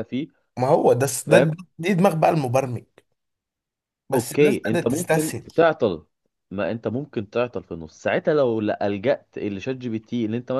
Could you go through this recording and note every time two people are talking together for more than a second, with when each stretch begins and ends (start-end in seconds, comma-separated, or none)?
4.1-5.5